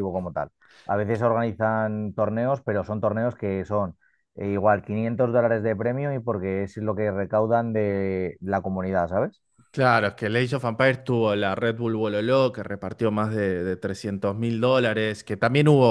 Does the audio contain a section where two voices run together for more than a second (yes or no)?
no